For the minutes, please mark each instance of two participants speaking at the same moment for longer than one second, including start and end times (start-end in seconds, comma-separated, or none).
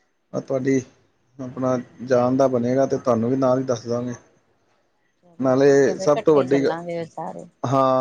5.4-6.7